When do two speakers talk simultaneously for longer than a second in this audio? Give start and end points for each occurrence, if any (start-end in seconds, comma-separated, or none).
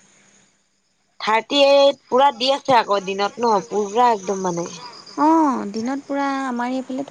none